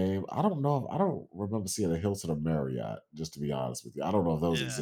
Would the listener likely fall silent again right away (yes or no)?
no